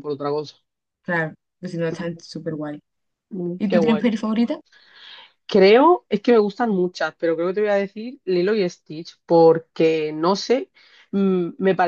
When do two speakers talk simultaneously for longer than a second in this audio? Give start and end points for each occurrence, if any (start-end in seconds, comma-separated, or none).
none